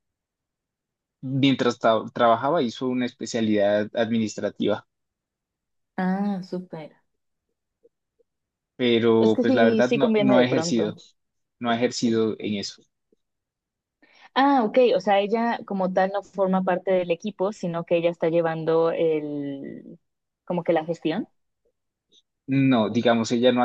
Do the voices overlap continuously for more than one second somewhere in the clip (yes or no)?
yes